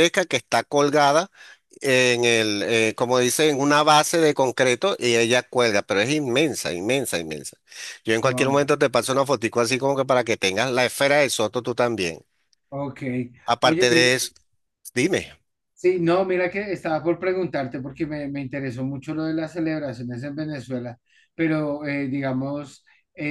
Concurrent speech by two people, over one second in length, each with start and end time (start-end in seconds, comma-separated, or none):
none